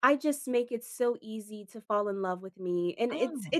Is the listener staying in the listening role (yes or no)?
yes